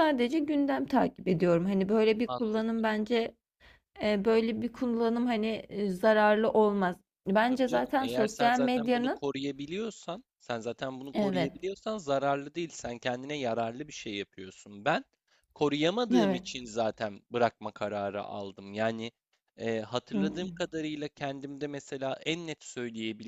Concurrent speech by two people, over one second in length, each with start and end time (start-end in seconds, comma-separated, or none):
7.5-9.2